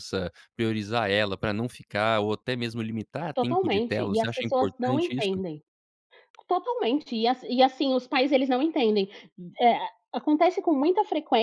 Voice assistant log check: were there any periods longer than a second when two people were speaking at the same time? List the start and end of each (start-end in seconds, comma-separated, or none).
3.3-5.4